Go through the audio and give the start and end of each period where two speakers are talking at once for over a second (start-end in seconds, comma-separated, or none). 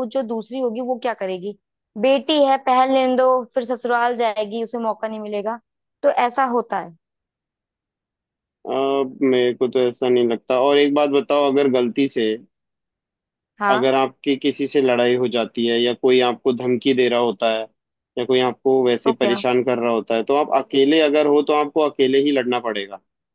none